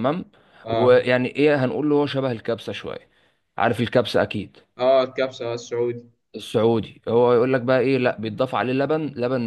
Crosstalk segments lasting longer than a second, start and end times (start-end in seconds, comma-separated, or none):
none